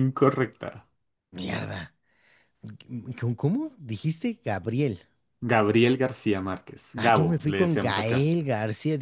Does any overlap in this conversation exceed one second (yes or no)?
yes